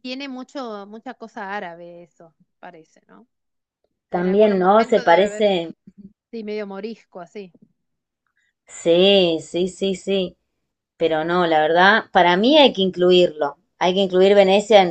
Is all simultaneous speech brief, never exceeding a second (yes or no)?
no